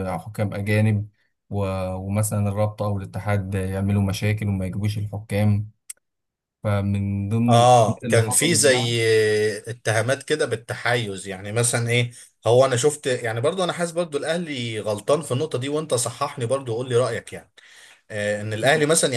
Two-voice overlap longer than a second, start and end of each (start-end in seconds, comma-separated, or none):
7.5-8.9